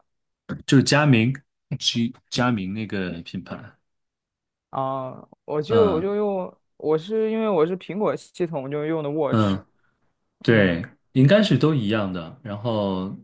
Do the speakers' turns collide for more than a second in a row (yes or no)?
no